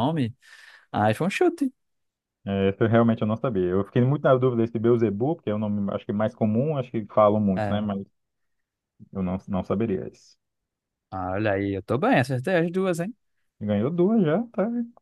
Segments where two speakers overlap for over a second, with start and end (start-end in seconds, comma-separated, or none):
none